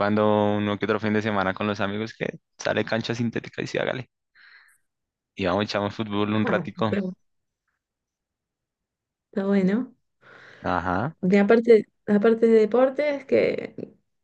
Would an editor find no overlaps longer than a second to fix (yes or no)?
yes